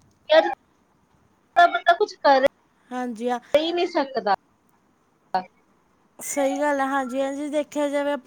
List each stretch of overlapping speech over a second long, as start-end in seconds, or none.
none